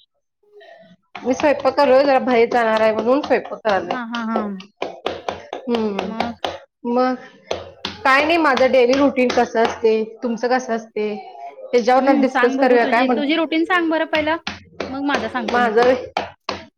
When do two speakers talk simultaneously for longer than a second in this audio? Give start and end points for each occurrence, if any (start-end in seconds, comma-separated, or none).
12.0-13.5